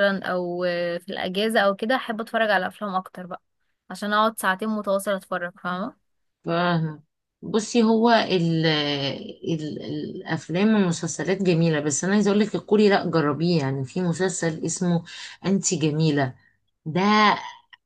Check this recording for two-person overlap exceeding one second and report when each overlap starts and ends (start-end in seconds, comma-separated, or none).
none